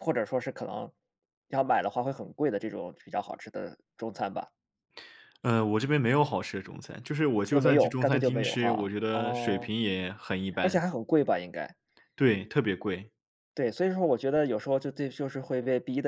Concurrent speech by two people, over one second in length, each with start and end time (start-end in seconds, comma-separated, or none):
7.5-9.7